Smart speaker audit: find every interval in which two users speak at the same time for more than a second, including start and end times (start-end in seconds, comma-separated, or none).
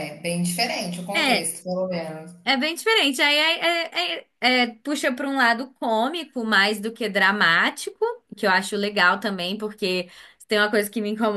none